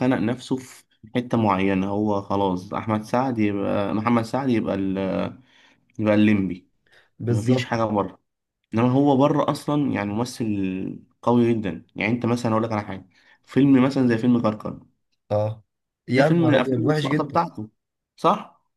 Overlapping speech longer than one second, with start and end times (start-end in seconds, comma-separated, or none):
16.1-17.4